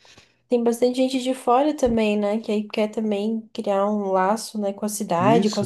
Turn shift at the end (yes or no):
no